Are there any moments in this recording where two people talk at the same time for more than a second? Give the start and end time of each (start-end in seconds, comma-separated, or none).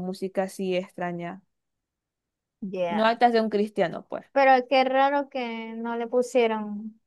none